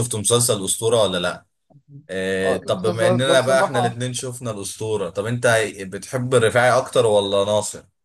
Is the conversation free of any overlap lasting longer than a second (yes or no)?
no